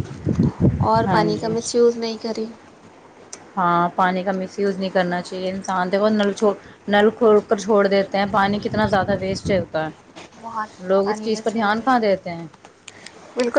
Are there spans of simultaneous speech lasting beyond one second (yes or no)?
yes